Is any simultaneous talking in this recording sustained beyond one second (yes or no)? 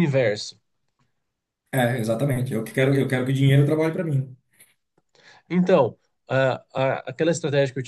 no